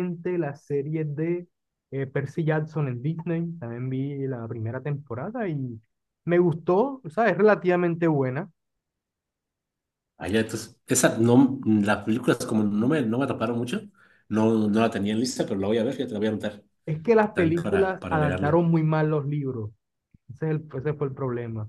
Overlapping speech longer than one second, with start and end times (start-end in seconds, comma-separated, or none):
17.3-18.6